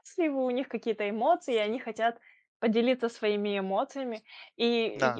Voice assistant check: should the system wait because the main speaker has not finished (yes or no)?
yes